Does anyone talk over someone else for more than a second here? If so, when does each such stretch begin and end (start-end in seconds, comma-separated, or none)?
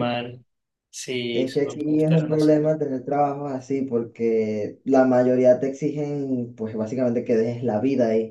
1.3-2.7